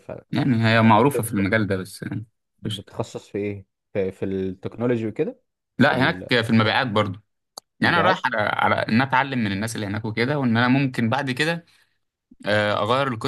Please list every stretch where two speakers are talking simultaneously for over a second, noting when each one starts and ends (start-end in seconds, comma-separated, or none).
none